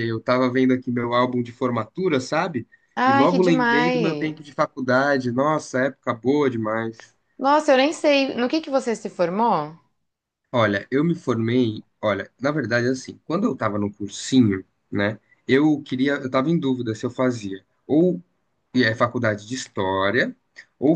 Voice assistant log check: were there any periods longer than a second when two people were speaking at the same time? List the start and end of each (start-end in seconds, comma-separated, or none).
3.1-4.4